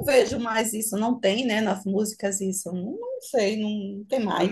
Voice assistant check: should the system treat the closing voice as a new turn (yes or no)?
yes